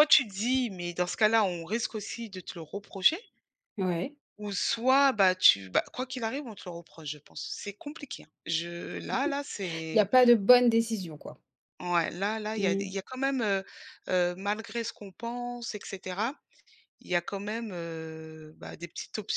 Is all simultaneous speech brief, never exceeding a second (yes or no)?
yes